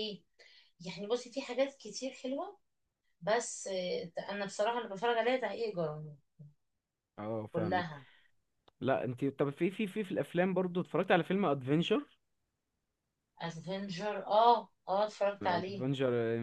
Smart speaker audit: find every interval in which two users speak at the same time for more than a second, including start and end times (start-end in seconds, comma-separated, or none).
none